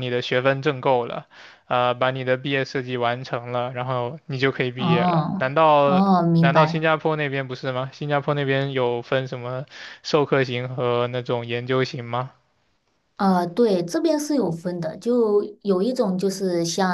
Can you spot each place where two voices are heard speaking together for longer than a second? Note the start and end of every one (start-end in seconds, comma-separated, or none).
4.8-6.9